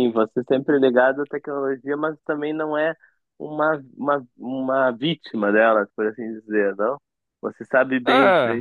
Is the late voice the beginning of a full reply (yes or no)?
no